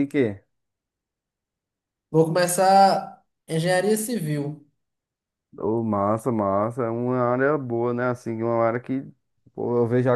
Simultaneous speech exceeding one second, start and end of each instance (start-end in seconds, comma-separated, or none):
none